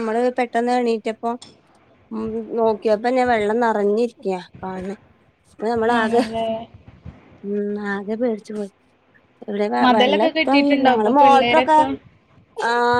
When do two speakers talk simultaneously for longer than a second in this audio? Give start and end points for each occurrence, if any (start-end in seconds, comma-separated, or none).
9.8-11.8